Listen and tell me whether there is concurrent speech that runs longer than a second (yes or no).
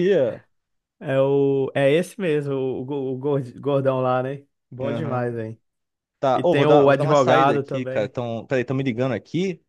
yes